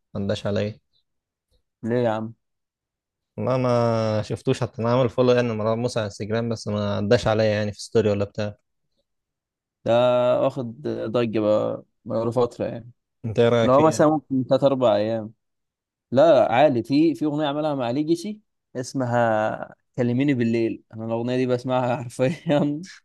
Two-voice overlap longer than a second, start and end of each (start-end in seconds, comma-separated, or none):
none